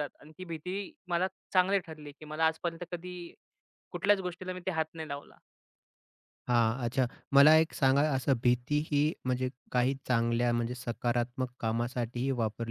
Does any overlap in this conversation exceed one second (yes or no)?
no